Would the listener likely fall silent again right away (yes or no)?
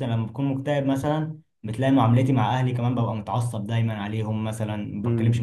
yes